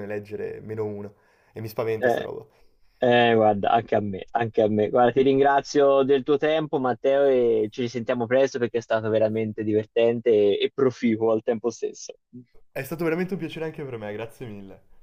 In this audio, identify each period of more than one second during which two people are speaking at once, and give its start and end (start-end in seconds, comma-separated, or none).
none